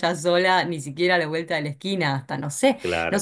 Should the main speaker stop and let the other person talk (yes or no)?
no